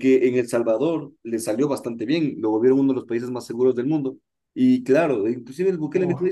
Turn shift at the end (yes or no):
no